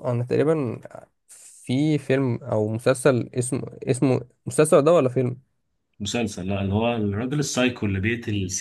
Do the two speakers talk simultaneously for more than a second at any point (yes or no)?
no